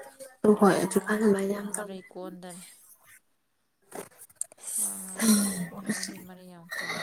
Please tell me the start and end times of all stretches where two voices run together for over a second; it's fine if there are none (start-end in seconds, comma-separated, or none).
0.5-2.1